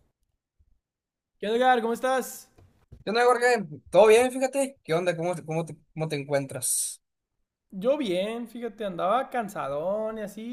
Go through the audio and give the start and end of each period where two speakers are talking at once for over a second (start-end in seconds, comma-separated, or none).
none